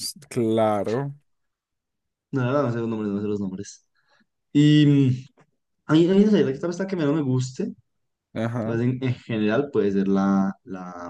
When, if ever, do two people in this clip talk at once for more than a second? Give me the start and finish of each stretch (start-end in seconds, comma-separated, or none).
none